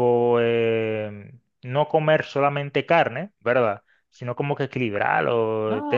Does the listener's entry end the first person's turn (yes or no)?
yes